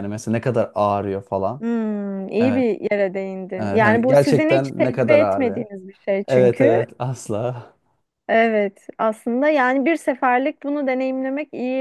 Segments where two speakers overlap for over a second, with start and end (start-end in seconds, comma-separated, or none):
3.6-5.7